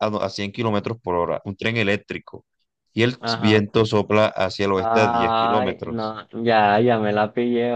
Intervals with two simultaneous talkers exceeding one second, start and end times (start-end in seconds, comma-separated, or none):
4.7-6.2